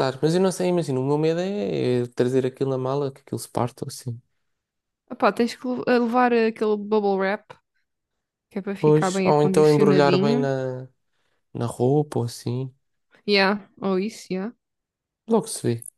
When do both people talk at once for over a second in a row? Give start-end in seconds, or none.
8.8-10.5